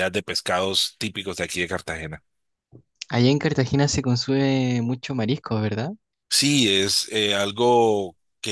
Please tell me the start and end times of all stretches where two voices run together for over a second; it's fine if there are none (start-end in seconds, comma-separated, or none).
none